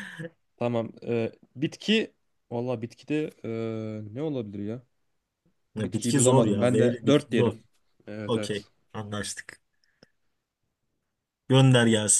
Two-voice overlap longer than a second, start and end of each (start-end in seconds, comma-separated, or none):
5.8-7.5